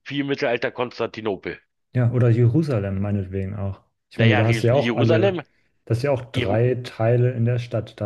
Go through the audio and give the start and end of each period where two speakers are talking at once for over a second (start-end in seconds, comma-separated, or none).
4.2-5.4